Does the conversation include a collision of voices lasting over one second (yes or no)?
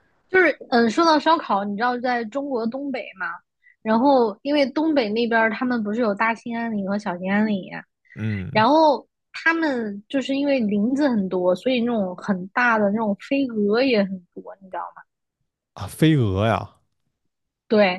no